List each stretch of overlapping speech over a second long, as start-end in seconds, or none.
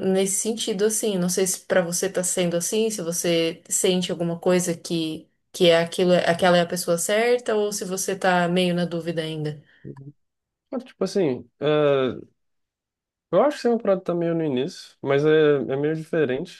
none